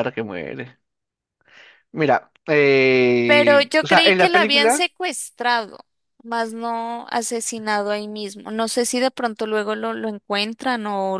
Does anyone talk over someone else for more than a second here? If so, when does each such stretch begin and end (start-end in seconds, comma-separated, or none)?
3.2-4.8